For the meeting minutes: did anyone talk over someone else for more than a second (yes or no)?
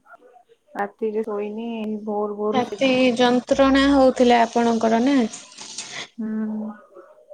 no